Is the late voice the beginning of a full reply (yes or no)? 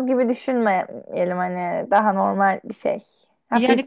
yes